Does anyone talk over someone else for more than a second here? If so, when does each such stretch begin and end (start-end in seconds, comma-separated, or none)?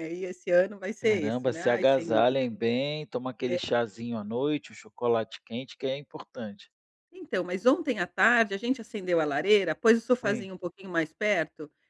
1.0-2.2